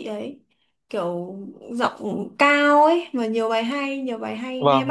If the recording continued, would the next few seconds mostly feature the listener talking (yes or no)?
yes